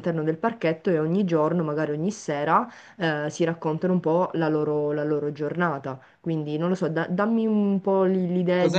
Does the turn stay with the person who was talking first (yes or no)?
no